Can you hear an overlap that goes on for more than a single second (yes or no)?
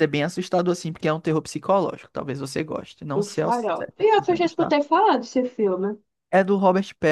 yes